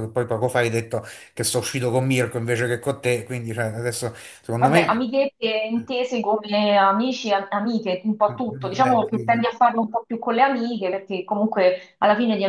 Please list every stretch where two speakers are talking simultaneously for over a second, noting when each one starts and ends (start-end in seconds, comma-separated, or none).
8.2-9.5